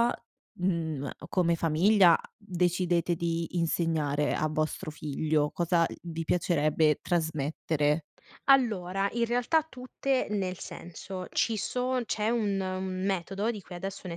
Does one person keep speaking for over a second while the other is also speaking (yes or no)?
no